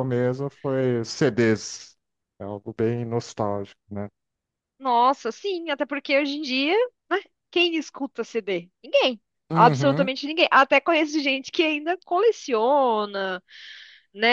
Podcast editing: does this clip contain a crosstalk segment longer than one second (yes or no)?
no